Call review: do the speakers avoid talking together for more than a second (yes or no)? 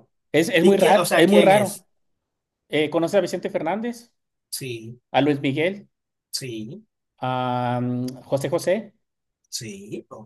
no